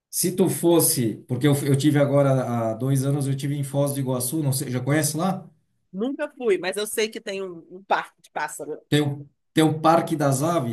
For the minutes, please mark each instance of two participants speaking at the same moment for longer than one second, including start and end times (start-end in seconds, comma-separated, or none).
none